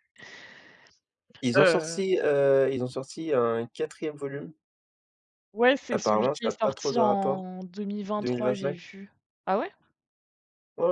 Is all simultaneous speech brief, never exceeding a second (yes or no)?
no